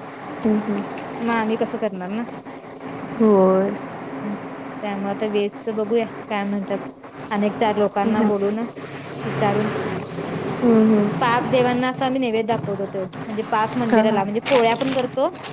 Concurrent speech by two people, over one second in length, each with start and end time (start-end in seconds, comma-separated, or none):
none